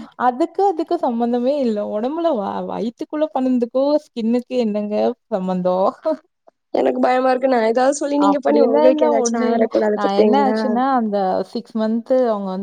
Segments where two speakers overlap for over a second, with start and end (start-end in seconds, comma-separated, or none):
8.3-10.6